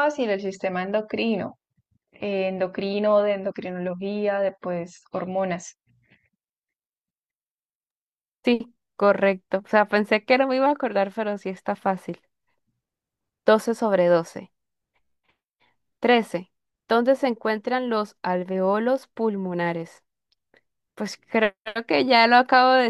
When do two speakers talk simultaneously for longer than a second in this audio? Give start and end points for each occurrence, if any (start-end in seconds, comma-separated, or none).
none